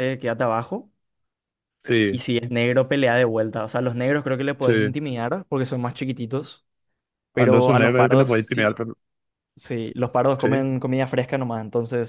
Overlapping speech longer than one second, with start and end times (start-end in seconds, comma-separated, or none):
7.3-8.8